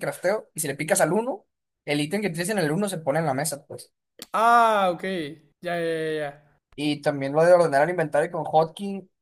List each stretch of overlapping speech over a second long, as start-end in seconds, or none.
none